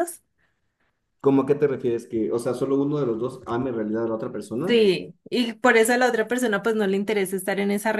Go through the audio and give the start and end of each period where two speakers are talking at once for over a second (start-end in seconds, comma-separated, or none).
none